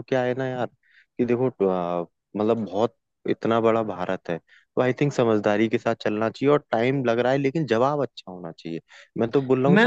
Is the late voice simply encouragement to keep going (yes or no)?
no